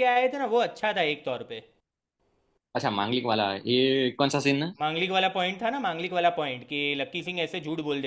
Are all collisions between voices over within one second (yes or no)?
yes